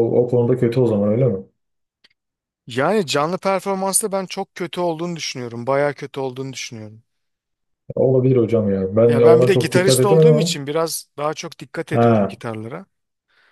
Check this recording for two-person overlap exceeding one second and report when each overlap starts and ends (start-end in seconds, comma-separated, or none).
9.1-10.6